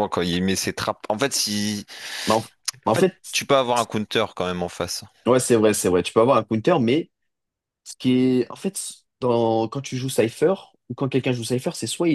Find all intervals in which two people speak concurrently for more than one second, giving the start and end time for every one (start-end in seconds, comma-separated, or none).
none